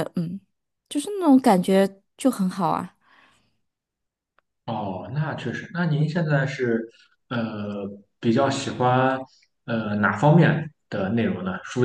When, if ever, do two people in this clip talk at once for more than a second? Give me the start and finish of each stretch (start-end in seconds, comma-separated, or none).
none